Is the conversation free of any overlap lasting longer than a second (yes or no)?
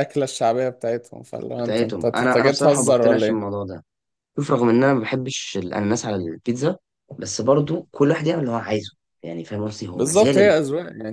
no